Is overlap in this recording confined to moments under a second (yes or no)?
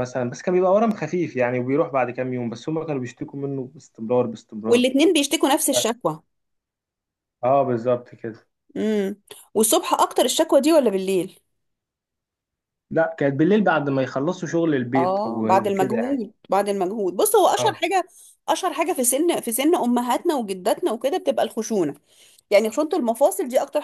no